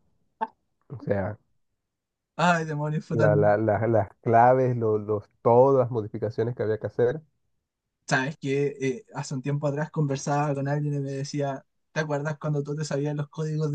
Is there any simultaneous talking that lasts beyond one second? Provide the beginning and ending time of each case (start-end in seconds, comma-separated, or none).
none